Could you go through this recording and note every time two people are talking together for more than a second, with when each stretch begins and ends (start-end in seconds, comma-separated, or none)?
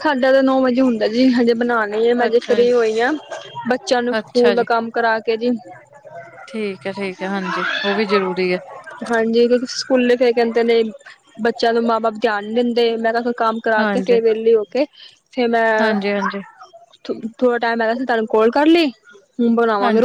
none